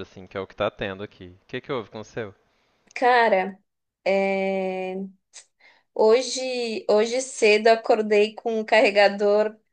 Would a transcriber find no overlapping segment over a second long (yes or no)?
yes